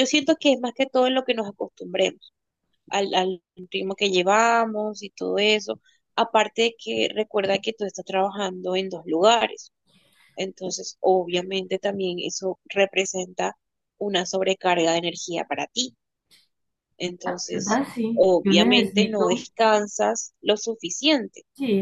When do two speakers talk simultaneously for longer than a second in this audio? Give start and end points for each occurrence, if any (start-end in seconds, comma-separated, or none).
17.5-19.5